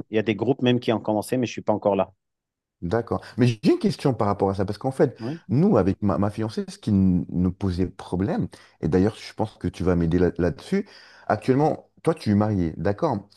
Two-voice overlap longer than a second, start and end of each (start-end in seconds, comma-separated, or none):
none